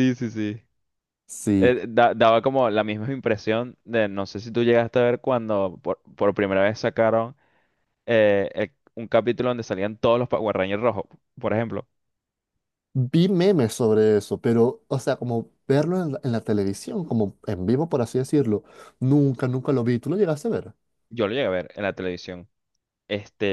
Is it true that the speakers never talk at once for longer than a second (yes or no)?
yes